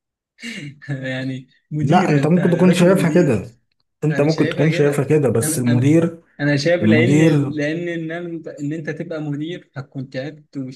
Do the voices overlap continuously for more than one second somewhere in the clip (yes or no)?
yes